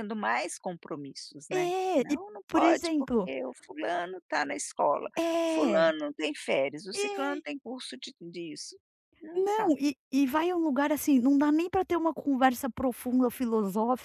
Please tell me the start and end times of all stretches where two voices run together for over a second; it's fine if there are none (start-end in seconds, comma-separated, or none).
1.5-3.3